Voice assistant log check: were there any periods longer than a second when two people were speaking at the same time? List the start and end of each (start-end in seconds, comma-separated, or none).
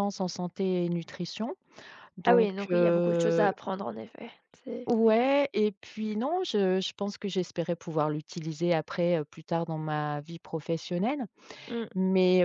2.3-3.5